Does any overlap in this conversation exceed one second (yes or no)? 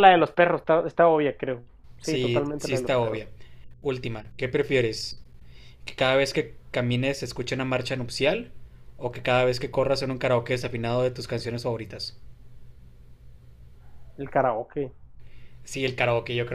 yes